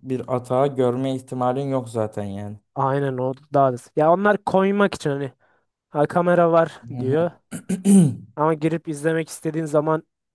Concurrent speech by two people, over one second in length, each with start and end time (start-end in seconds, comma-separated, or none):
none